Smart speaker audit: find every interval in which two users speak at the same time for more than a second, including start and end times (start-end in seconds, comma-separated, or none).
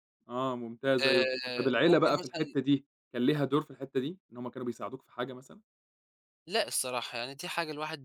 1.0-2.6